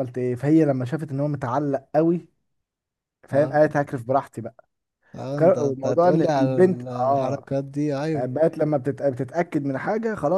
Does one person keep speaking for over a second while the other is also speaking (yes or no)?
yes